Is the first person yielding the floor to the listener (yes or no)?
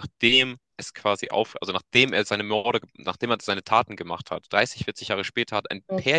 no